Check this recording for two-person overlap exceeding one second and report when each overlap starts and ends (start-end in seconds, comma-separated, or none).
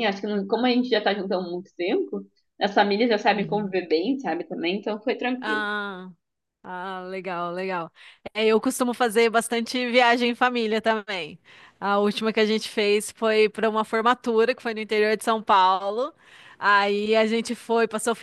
none